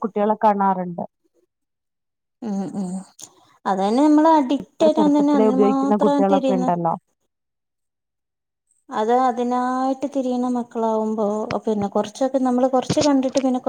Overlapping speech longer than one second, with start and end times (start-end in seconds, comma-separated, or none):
4.7-6.8